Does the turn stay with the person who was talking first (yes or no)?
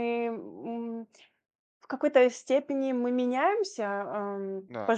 yes